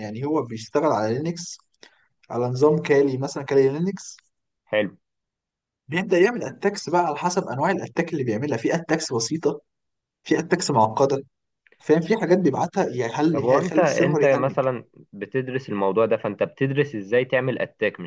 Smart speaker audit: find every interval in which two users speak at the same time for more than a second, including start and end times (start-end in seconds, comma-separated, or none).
13.3-14.6